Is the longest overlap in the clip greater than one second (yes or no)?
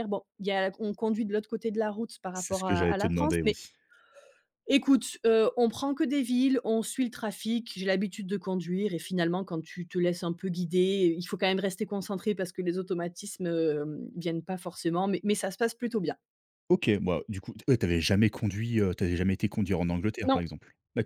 yes